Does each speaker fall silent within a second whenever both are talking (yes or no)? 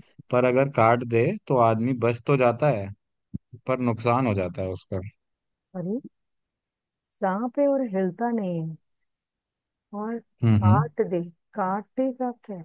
yes